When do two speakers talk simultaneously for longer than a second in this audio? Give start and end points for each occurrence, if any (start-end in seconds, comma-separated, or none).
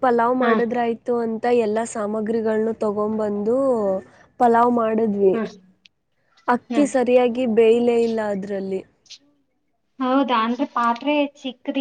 none